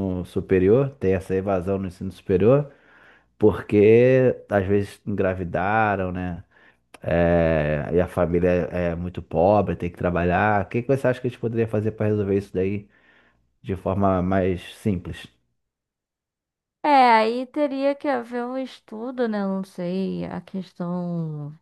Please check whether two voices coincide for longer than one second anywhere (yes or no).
no